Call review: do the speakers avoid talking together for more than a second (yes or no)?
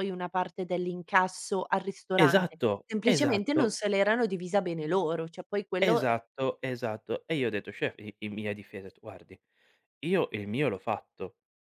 no